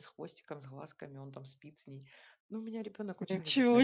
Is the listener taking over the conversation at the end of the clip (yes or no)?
no